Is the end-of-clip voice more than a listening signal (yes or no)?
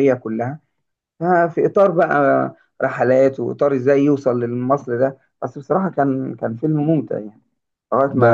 yes